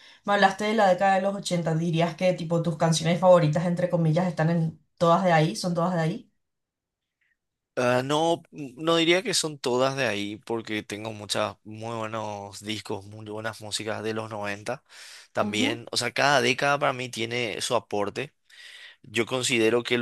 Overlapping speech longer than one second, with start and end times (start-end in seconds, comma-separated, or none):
none